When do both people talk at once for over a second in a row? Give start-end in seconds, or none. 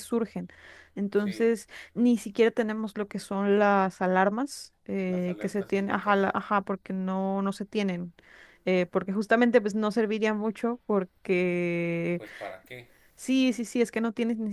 5.1-6.3